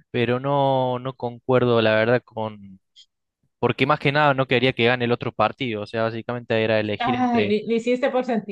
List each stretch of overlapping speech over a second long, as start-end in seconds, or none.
none